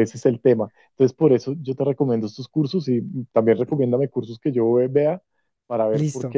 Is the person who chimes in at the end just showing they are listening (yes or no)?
yes